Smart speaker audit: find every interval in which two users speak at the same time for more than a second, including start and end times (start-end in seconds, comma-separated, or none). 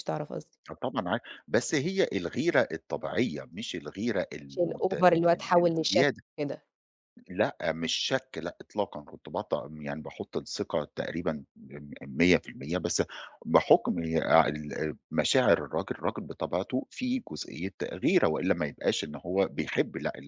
4.5-6.2